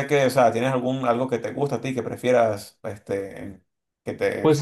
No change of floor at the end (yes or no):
no